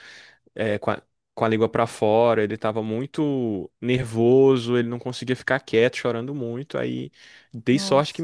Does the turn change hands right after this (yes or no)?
no